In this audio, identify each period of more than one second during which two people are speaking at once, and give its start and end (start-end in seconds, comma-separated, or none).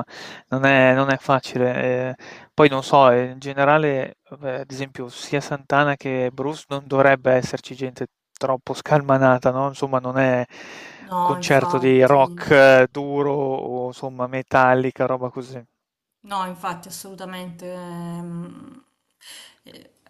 11.2-12.5